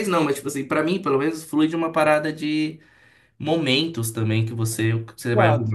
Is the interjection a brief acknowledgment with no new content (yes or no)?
yes